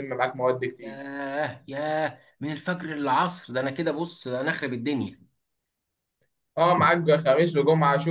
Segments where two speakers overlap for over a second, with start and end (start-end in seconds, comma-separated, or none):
none